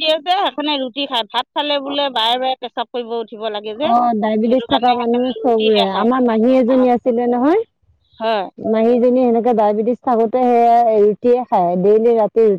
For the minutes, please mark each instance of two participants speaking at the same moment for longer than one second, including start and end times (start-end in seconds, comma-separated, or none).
4.5-6.1